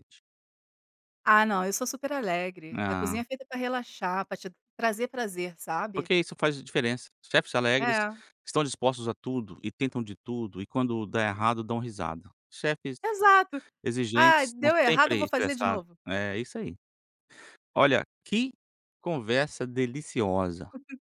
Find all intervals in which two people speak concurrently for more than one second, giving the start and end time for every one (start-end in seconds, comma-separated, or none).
14.1-16.0